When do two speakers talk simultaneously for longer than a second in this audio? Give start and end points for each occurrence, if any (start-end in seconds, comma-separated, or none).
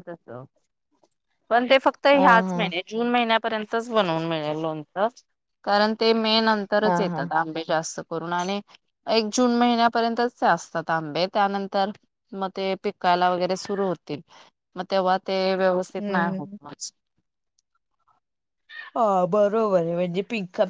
none